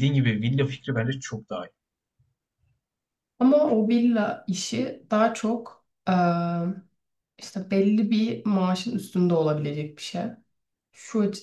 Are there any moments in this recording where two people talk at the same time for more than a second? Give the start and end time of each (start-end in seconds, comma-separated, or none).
none